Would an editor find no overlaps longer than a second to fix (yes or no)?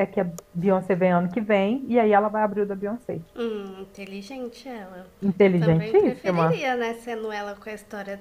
no